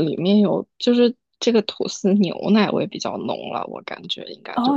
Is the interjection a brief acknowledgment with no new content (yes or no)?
no